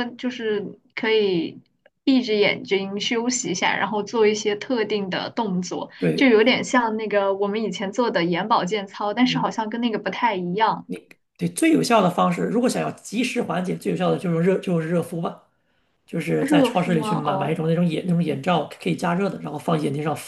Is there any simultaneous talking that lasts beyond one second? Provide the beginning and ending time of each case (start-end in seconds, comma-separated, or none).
16.4-17.6